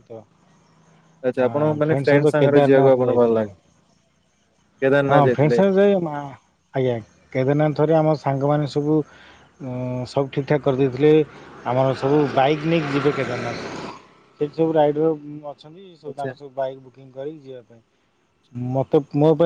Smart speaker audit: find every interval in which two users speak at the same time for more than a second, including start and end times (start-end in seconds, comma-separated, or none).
1.4-3.4